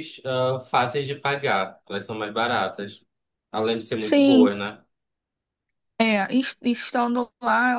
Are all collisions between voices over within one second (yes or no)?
yes